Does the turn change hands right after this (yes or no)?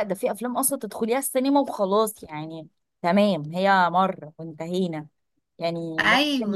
no